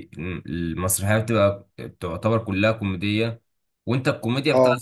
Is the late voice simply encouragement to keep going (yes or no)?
yes